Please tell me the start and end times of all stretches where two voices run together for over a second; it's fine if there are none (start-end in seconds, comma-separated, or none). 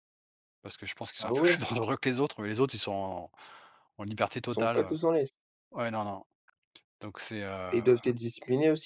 none